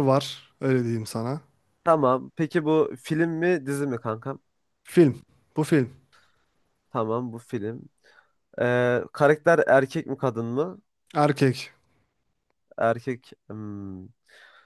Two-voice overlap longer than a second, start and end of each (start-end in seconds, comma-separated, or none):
none